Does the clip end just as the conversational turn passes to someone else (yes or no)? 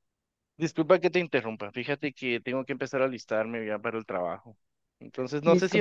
no